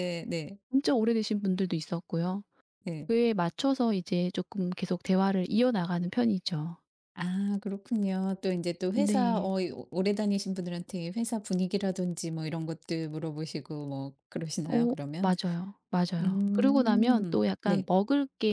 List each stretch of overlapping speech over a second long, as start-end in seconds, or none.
16.2-17.9